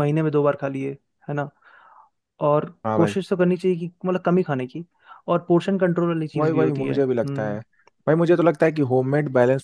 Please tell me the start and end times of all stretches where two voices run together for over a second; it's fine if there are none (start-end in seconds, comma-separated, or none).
6.3-7.6